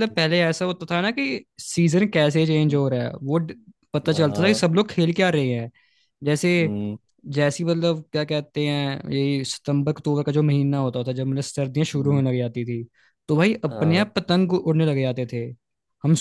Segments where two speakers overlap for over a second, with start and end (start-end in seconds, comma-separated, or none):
none